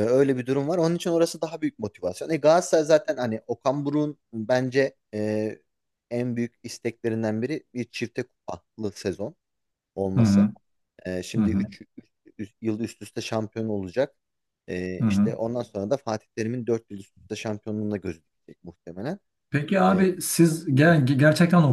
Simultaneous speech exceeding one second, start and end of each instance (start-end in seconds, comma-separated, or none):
none